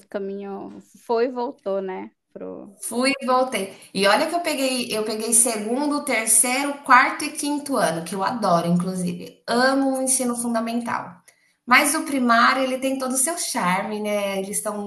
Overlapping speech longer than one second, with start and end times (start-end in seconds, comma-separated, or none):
none